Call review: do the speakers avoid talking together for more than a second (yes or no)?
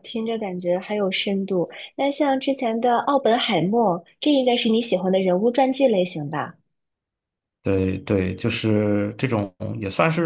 yes